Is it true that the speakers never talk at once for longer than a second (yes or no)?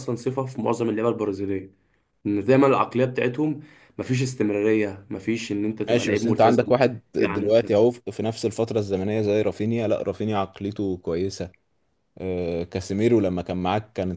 no